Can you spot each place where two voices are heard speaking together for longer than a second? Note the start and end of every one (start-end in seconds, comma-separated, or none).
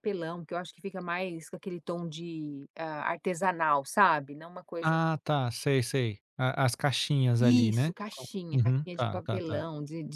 7.4-9.7